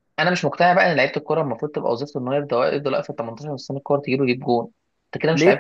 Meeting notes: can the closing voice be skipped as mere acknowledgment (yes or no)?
no